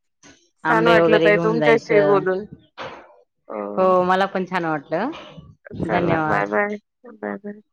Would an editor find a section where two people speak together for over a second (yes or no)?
yes